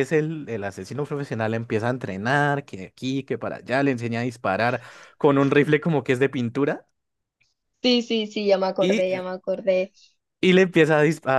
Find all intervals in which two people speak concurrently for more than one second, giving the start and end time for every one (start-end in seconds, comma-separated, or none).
none